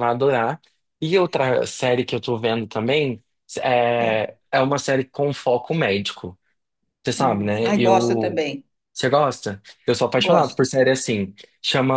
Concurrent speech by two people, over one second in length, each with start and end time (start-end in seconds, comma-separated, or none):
7.2-8.4